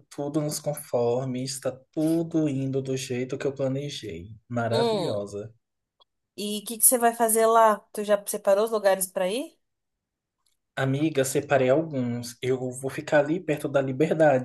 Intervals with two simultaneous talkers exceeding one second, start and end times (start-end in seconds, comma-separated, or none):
none